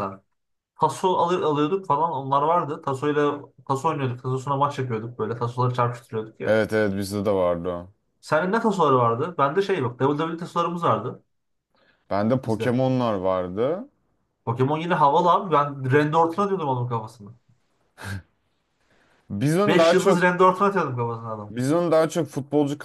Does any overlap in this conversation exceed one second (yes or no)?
no